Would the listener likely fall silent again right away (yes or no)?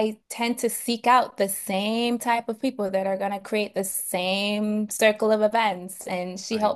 yes